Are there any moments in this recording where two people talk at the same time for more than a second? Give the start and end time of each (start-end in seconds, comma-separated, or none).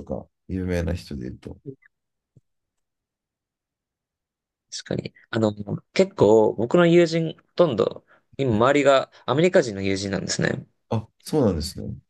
none